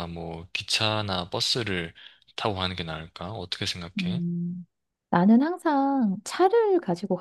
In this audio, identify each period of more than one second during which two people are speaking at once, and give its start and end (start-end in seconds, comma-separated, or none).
none